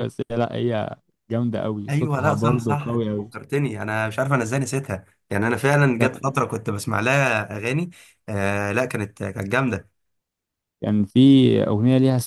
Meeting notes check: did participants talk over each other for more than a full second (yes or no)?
yes